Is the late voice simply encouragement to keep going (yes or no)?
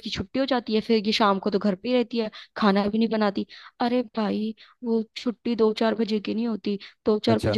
yes